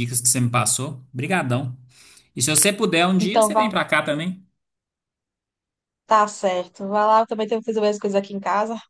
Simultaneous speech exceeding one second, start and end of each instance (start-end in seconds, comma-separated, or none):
none